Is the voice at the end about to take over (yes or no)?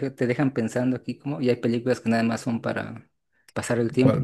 yes